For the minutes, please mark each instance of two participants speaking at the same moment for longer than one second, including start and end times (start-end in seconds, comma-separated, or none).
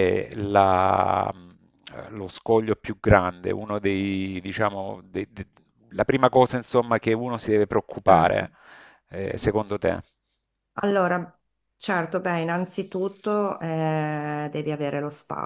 none